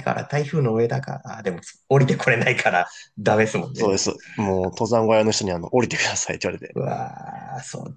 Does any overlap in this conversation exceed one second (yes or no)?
no